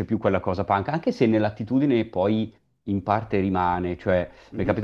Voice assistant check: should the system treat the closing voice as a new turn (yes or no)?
no